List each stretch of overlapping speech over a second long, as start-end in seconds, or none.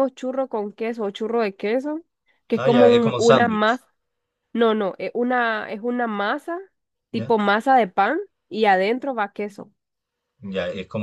2.6-3.8